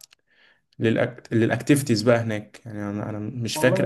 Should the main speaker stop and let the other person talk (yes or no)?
no